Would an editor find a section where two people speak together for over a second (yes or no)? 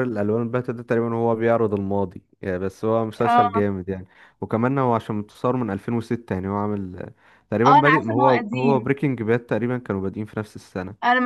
yes